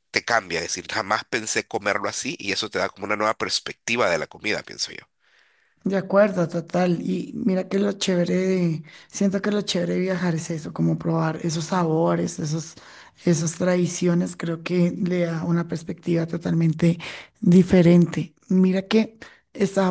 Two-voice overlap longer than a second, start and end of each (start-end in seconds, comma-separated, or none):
none